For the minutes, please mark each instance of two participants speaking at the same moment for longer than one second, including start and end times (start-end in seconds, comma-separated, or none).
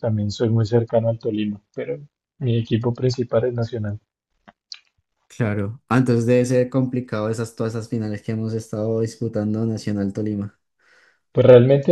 none